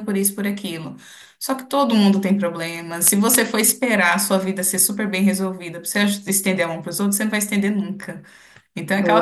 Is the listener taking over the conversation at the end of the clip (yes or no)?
no